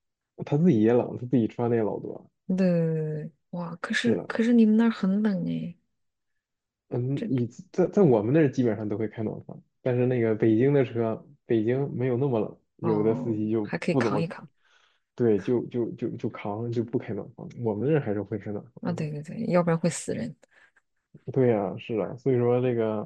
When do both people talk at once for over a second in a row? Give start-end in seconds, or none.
12.8-14.3